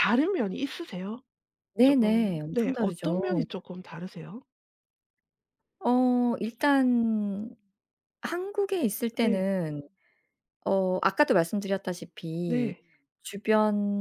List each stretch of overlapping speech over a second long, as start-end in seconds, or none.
1.8-3.5